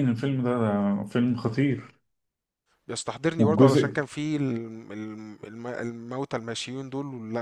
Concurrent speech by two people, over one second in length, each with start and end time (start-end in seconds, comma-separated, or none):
none